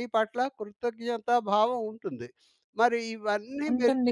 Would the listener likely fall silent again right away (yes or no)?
yes